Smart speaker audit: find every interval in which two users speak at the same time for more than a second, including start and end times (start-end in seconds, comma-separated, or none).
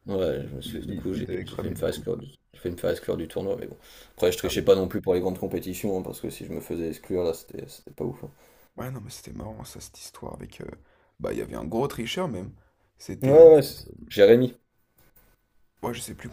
0.6-2.0